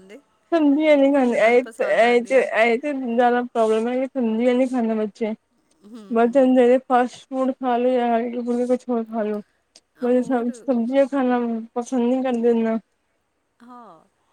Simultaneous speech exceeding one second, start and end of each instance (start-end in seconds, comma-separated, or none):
1.0-2.5